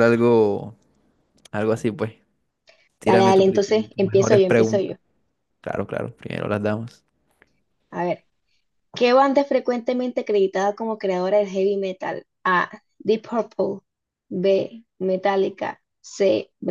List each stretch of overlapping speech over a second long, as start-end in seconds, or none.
3.1-4.9